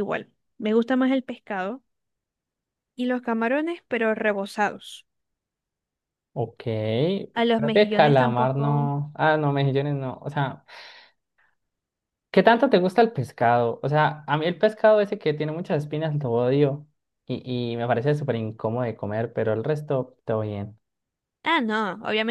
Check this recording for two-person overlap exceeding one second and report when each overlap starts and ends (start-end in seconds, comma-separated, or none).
7.6-8.9